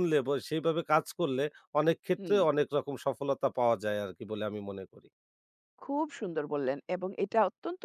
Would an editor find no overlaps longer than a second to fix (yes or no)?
yes